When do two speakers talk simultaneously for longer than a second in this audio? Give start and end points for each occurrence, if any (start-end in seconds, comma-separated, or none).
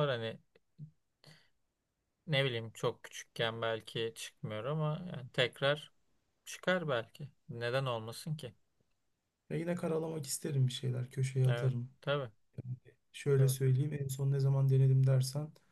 none